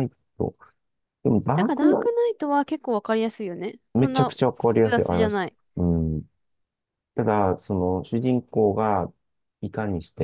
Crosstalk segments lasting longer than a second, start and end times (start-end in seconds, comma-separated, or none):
3.9-5.5